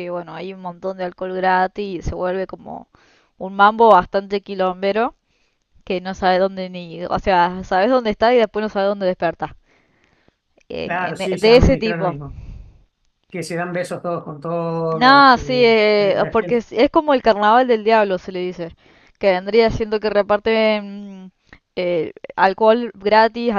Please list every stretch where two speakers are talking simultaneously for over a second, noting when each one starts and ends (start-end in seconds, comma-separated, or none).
10.8-12.2, 14.9-16.6